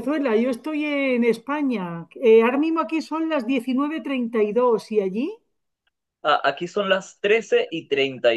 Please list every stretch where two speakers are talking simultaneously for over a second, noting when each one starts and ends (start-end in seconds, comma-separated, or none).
none